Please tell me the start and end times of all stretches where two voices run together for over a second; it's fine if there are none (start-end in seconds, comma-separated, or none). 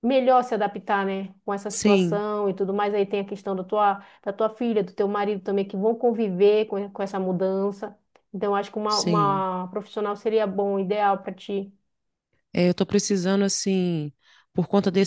none